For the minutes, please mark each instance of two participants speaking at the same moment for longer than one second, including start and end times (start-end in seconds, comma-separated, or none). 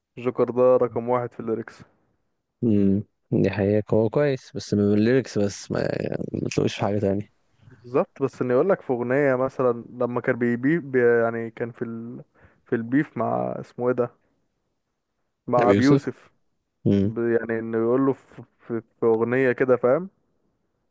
none